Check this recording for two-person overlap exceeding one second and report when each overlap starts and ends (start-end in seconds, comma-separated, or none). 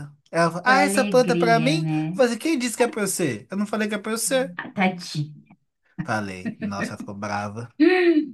0.6-2.2